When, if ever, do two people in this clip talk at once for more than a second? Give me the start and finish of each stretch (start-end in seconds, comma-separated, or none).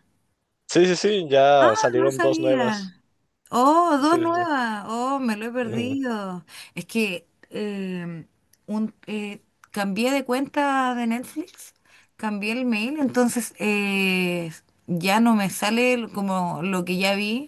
1.6-3.0